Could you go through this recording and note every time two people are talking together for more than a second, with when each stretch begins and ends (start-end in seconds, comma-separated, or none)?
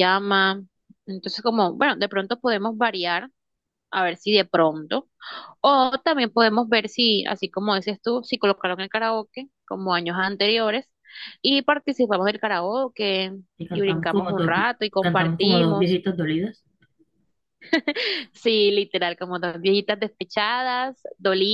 13.7-16.0